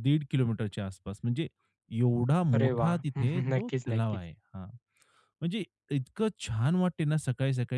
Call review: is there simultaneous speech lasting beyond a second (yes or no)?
yes